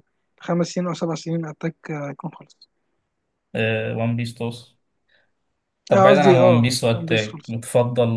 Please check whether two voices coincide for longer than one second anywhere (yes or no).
yes